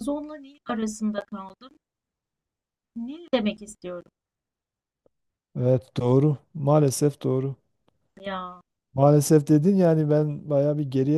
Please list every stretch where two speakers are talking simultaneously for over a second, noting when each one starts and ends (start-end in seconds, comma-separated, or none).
none